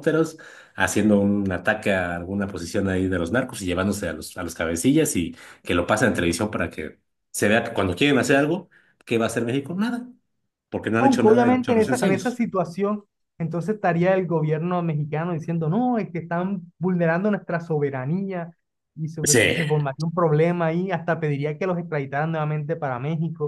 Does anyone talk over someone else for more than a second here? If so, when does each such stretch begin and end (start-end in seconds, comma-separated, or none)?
11.0-12.4